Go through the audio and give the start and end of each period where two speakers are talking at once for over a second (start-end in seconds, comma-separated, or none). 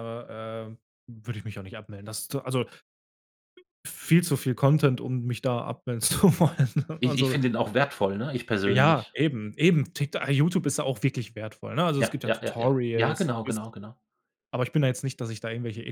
12.0-13.7